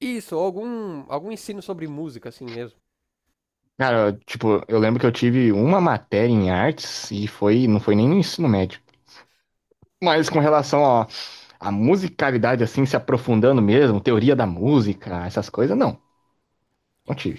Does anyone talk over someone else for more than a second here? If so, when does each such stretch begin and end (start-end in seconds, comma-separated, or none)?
none